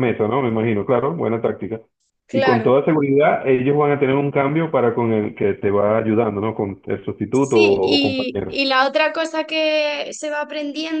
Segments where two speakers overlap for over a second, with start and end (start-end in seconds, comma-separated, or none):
7.3-8.5